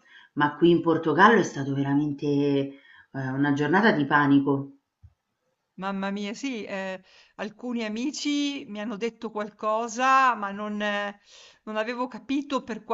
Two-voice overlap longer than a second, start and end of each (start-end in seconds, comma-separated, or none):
none